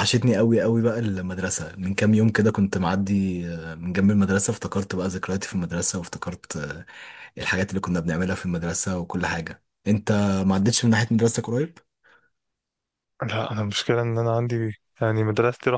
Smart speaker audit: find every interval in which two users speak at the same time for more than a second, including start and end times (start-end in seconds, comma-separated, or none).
none